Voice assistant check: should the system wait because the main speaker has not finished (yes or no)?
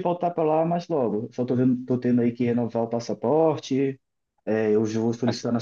yes